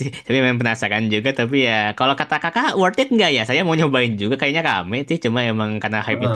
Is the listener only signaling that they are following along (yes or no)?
no